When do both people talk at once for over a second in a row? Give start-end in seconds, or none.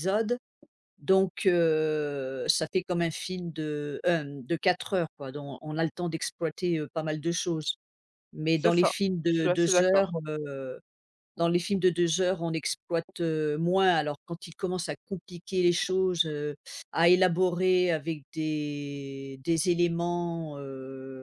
8.6-10.2